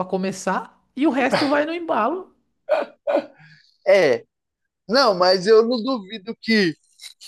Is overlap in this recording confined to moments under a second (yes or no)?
yes